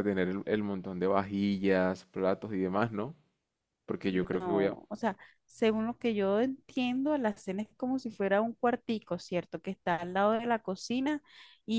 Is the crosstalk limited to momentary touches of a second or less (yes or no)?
yes